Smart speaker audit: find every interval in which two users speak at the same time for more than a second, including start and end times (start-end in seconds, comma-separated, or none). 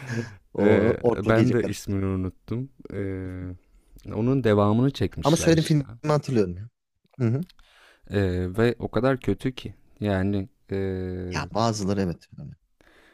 0.6-1.9